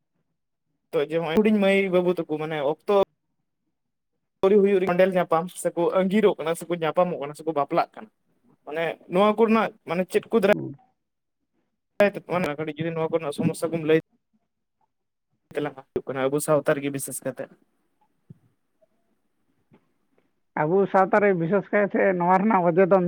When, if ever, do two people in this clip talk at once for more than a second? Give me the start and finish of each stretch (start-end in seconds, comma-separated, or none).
none